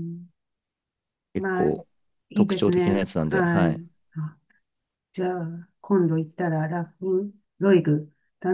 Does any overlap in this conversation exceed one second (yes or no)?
yes